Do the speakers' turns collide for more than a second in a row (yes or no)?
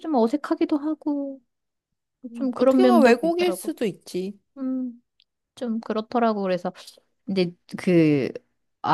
yes